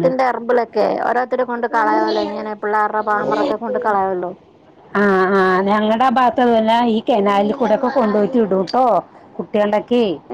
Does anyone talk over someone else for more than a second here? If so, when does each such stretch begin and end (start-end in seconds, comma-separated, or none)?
none